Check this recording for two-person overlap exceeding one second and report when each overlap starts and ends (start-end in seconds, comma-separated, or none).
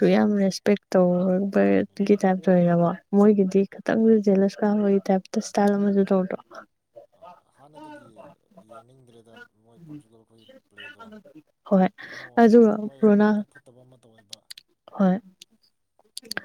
none